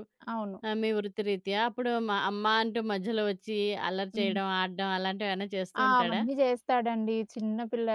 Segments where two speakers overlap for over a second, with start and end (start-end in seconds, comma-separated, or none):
none